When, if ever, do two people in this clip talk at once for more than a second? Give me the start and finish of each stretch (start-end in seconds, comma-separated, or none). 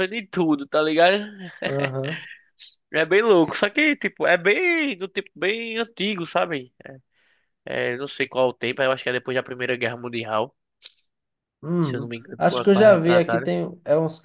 11.8-13.5